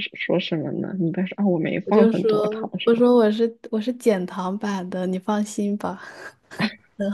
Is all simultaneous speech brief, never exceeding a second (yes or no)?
no